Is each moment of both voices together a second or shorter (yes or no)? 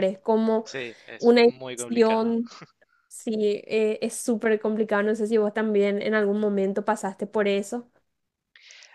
no